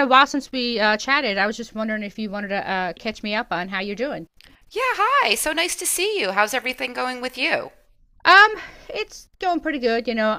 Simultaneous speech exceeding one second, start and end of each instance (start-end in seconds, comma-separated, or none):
none